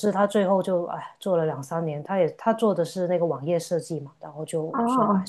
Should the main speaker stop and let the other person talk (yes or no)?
no